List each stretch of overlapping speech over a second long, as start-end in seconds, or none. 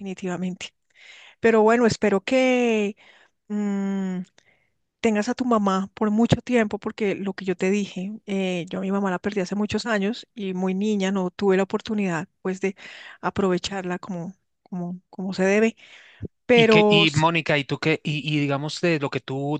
none